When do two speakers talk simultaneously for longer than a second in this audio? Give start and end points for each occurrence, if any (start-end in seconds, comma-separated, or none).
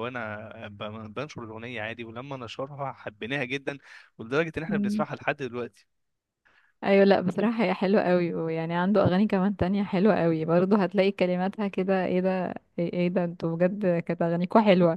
none